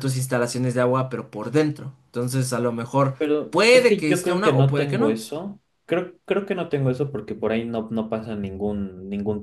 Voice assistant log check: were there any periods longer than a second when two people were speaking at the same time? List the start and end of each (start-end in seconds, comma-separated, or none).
3.2-5.2